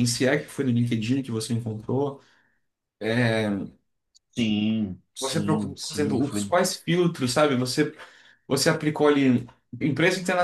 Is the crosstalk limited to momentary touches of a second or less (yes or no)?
no